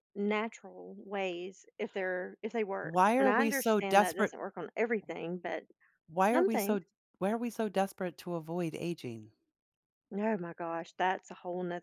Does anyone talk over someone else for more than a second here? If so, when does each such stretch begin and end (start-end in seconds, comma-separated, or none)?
2.8-4.3